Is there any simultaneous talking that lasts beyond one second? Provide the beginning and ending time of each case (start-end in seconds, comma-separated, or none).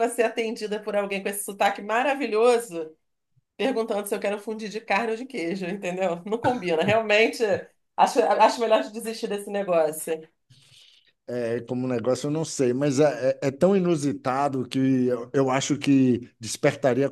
none